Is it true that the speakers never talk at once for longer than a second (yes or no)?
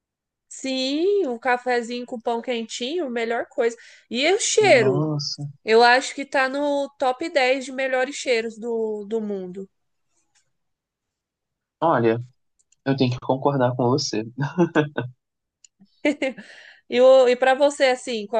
yes